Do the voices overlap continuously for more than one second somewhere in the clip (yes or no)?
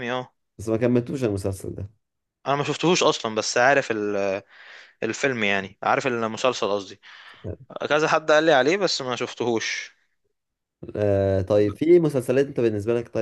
no